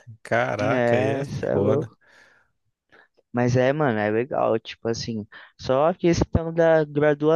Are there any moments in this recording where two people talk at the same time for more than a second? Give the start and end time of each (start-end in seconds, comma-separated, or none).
0.7-1.9